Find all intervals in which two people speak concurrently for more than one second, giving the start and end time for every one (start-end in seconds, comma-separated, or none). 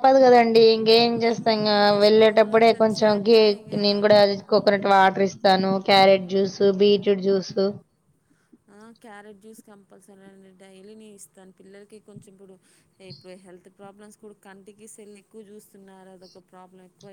1.2-3.8